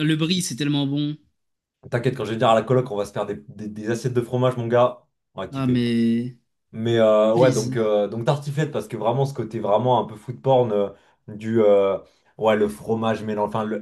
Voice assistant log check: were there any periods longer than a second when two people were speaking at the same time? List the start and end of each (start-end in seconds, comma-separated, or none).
none